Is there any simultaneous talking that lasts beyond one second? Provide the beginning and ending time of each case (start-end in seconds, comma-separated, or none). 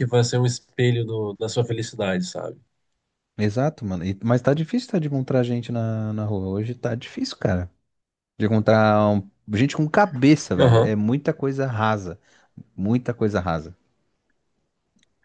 none